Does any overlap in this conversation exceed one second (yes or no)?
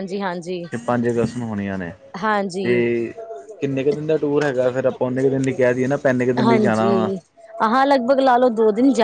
no